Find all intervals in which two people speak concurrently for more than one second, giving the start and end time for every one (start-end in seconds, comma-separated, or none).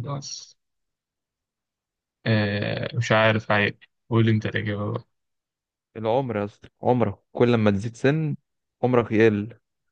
none